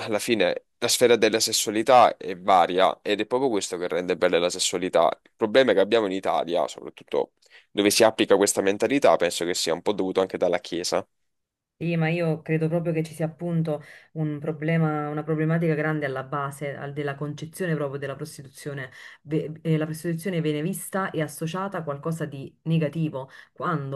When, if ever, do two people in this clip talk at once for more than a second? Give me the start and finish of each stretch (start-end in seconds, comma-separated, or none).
none